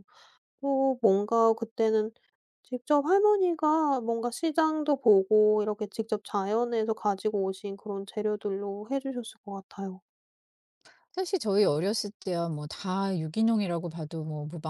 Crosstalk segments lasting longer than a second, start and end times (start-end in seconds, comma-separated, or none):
none